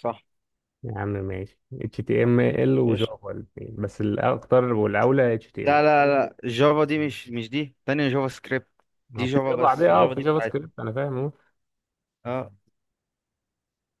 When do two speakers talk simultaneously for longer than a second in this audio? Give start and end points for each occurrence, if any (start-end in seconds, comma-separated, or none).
9.2-10.6